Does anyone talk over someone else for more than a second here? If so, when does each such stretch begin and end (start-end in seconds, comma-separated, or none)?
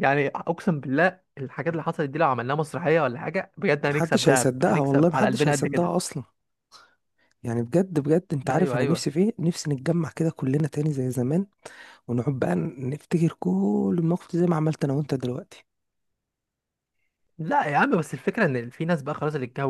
3.9-5.9